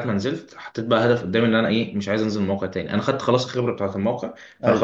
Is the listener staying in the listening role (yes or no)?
yes